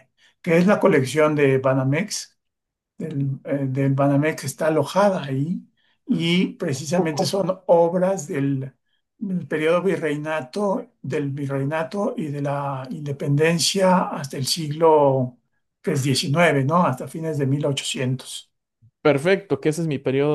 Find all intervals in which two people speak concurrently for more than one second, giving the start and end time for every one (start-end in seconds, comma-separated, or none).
none